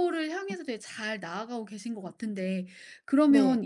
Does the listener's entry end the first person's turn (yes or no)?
no